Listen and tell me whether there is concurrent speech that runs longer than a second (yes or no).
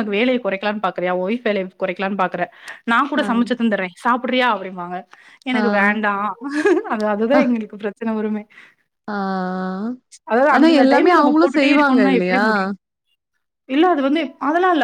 yes